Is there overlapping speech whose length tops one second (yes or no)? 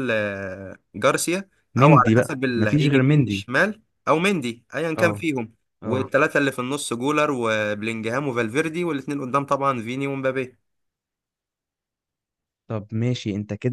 yes